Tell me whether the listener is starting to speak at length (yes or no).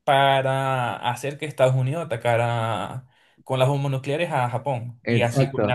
yes